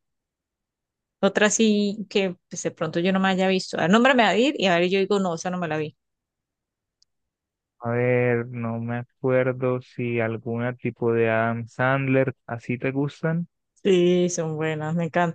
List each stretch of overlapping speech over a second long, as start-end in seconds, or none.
none